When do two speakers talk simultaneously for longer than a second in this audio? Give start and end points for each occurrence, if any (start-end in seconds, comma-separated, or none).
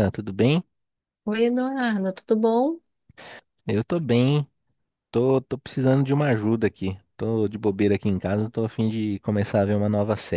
none